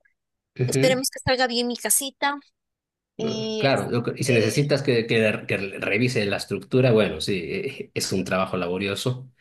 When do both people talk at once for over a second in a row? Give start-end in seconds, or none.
3.2-4.7